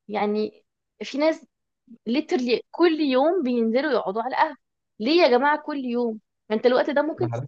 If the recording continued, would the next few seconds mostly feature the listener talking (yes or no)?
no